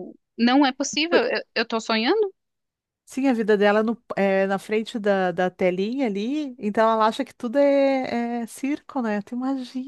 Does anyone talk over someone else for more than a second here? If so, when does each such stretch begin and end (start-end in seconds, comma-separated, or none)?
none